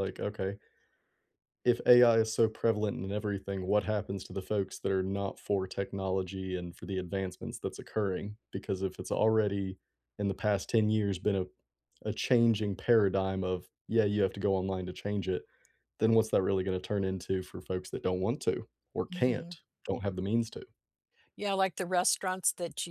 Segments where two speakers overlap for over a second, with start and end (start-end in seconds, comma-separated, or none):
none